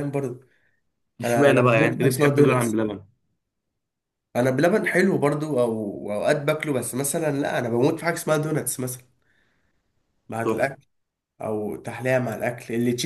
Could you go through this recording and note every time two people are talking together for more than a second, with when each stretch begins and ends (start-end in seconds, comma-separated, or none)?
1.2-2.8